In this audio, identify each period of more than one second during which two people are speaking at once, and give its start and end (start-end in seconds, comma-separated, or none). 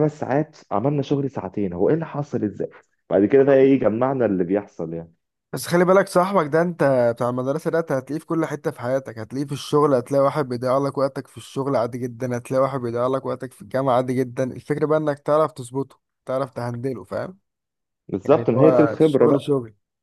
18.3-19.5